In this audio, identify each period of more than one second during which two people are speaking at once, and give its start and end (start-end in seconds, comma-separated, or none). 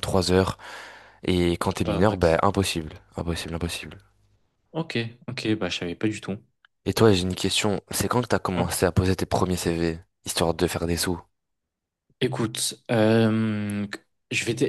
none